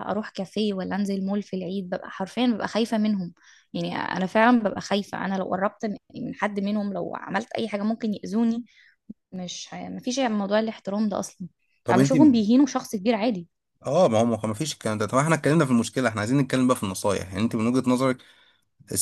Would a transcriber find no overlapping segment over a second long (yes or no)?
yes